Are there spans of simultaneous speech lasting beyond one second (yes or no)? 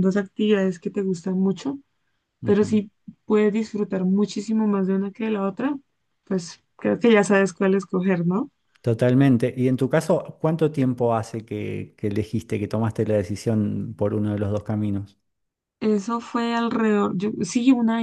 no